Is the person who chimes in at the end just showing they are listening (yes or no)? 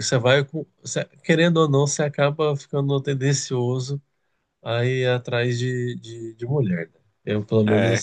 yes